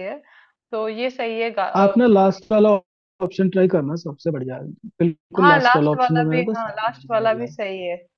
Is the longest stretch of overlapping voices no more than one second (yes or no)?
no